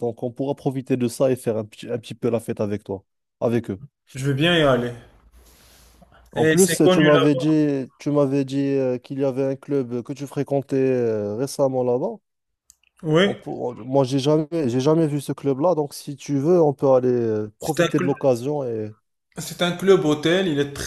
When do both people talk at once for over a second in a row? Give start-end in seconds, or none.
6.3-7.5